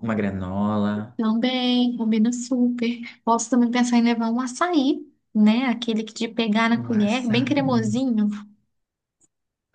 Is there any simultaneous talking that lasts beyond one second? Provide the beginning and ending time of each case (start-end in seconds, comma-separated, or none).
6.7-7.9